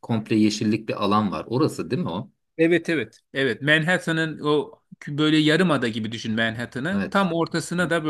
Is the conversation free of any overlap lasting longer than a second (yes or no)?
yes